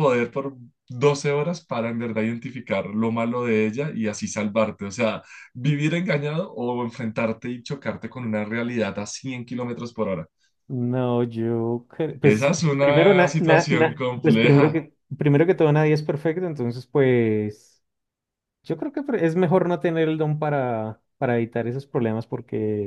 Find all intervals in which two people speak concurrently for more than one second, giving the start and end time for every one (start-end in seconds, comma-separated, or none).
12.2-14.8